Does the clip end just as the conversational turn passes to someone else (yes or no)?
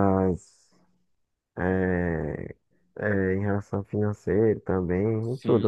yes